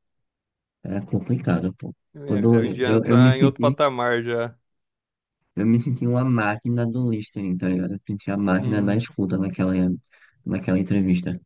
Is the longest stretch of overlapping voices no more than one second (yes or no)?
no